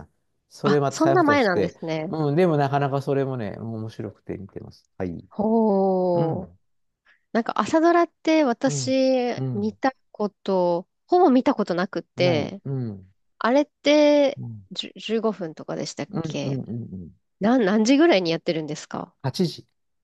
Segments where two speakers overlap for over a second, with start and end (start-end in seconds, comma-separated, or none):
0.6-2.1